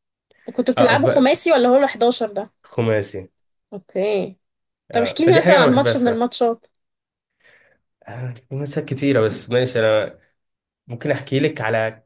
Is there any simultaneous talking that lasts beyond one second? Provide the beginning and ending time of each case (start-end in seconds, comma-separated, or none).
4.9-6.3